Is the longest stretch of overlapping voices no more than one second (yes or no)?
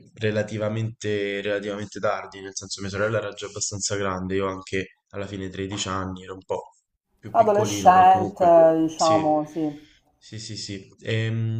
no